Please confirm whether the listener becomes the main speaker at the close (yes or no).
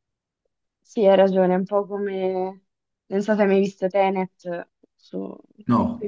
no